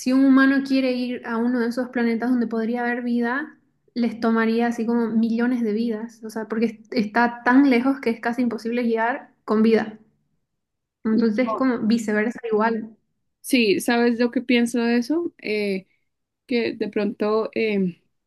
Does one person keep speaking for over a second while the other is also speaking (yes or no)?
no